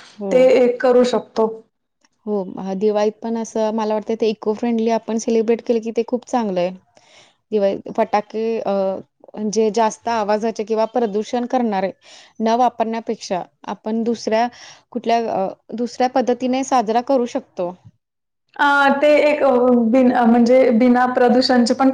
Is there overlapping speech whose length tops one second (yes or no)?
no